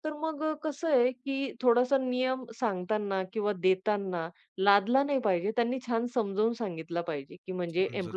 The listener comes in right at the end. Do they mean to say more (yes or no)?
no